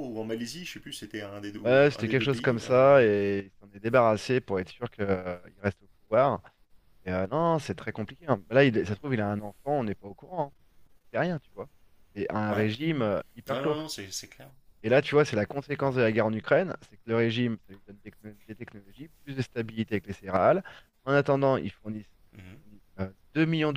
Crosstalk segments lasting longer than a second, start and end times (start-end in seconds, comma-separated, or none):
1.6-3.1